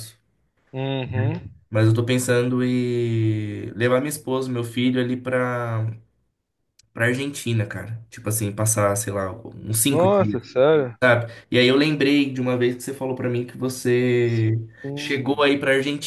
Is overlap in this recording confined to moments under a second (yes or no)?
yes